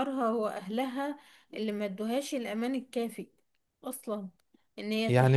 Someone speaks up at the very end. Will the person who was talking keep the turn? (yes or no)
no